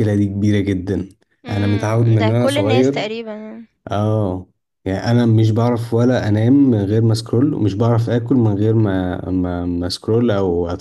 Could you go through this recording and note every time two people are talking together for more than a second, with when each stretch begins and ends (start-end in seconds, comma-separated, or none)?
1.5-3.0